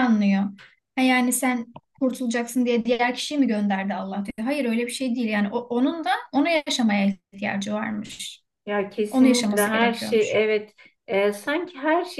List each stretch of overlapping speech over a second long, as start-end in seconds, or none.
9.1-10.4